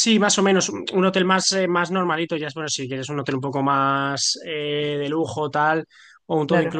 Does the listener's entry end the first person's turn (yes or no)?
no